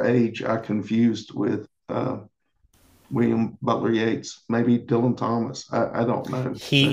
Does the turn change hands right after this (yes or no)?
yes